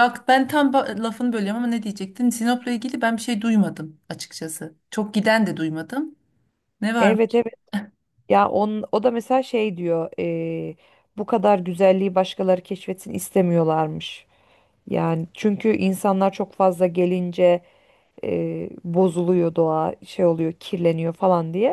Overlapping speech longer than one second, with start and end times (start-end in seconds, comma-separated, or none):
none